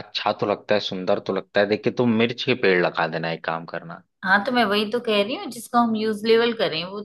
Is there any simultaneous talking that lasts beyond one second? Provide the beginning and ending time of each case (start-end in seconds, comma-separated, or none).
none